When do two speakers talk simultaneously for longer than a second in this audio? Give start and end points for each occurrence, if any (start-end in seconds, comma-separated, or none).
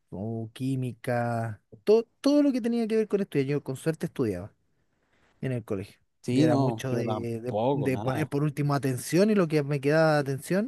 6.2-8.3